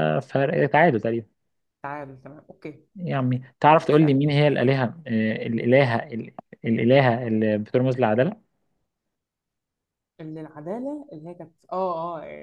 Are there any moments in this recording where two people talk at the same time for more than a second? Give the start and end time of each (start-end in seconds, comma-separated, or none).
none